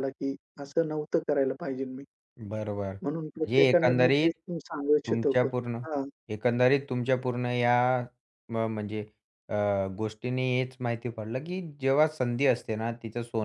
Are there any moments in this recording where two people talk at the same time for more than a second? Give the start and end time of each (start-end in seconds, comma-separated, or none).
3.0-4.3